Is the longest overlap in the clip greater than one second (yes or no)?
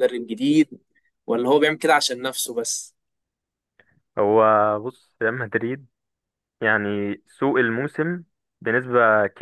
no